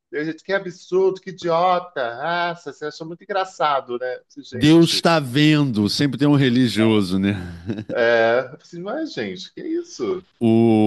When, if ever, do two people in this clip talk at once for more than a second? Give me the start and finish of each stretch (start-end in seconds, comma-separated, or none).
none